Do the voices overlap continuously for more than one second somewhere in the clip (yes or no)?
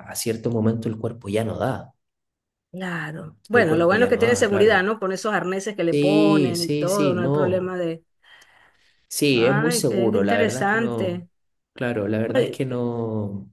yes